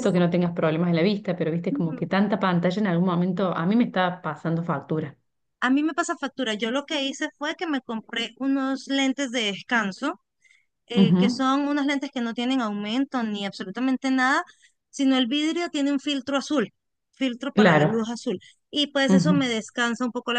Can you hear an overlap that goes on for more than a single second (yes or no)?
no